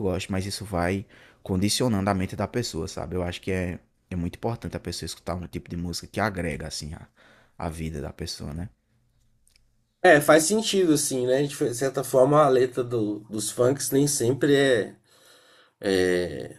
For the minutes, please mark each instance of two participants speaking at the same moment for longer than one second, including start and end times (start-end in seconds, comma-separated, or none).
none